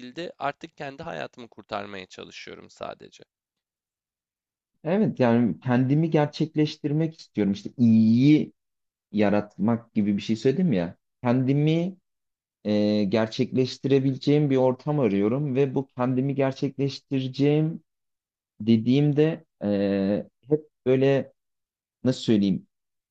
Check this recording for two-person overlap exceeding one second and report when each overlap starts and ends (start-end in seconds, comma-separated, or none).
none